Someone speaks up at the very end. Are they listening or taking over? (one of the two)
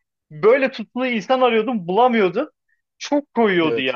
listening